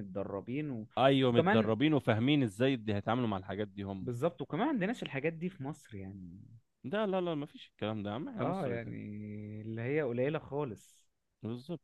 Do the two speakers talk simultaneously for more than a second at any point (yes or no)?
no